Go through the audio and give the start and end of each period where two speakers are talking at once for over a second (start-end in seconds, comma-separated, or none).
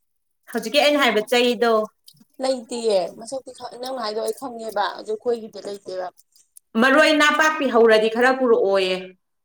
none